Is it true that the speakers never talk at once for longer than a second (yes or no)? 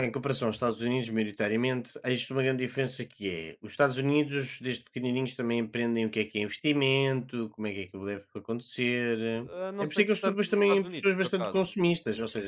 no